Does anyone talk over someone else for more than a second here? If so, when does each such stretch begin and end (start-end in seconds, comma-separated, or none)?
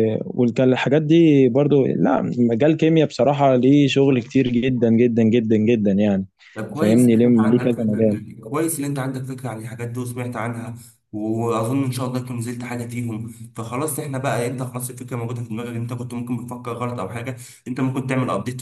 6.7-8.2